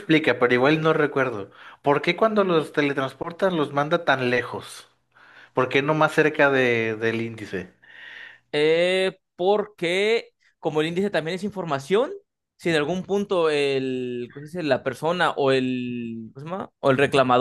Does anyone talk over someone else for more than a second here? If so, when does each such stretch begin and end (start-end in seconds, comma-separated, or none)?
none